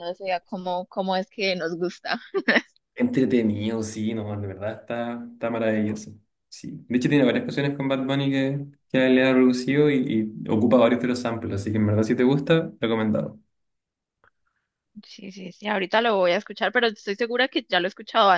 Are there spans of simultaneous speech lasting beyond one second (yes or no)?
no